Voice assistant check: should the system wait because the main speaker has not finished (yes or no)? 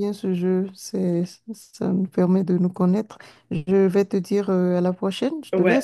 no